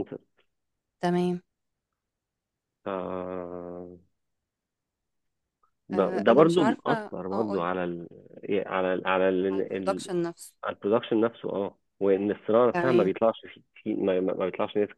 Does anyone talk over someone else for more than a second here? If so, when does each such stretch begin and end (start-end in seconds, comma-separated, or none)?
5.9-7.7